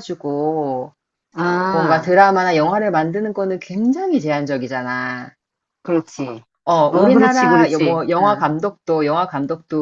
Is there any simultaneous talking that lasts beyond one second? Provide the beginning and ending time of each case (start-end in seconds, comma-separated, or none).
6.9-8.4